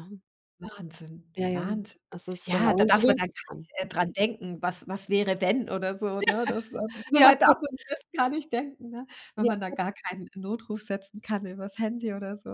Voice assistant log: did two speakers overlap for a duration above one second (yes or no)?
yes